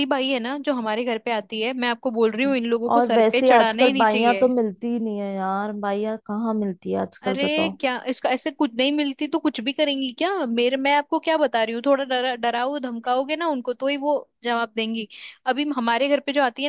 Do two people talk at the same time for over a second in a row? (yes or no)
yes